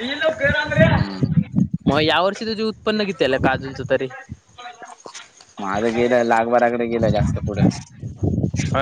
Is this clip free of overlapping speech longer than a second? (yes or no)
yes